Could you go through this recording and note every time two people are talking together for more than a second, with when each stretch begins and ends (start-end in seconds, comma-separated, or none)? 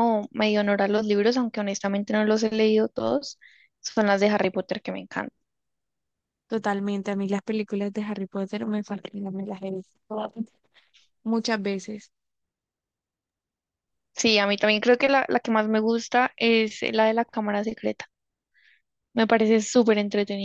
none